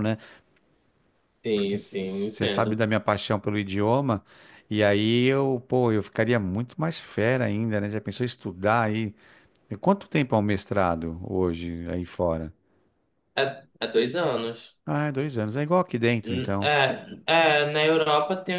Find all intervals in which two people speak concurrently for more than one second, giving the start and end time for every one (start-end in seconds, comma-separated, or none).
1.5-2.8